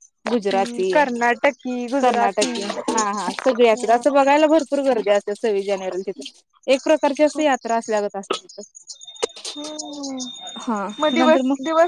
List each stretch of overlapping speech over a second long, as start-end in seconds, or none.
none